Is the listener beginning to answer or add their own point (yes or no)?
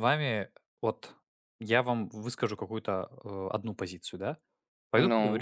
no